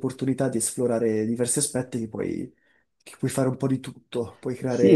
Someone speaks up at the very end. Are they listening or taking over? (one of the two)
taking over